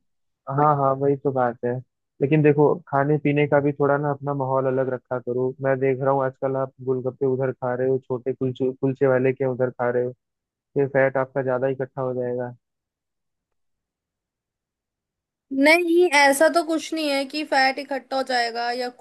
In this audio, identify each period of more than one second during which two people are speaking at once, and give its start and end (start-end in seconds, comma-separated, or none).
none